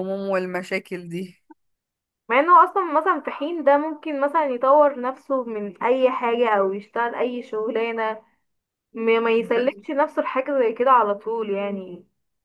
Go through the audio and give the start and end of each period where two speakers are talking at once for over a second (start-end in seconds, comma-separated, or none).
none